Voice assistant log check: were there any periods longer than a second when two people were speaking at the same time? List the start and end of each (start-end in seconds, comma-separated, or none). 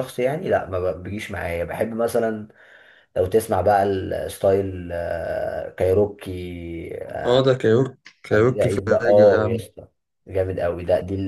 8.3-9.6